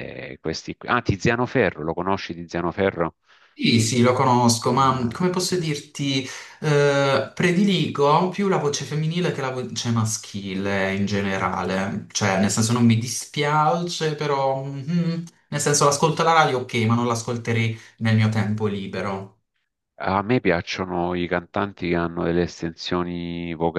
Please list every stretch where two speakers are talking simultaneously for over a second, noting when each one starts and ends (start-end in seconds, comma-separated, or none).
none